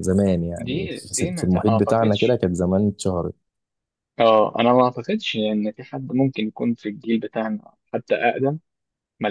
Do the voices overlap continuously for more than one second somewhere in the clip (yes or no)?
yes